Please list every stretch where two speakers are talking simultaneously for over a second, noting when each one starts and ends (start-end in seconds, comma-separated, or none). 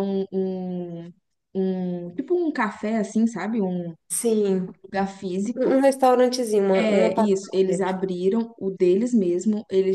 6.8-8.0